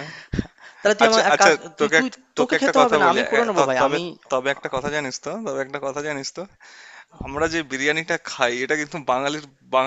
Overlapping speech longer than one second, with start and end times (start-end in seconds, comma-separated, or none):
1.0-4.0